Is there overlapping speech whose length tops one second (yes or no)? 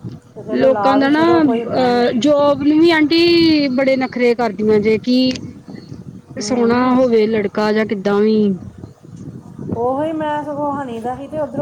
yes